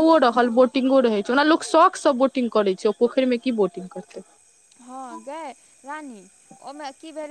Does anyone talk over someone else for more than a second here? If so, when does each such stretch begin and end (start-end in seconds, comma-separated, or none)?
none